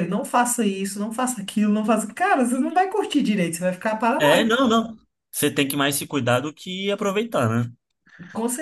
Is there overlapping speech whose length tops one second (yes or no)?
no